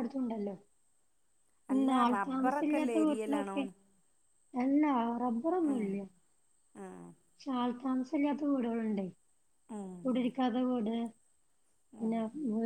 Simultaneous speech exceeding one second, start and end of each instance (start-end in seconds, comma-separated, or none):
1.7-3.6